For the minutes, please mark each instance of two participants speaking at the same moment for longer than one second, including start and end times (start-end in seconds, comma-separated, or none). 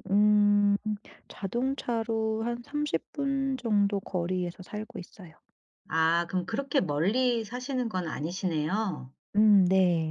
none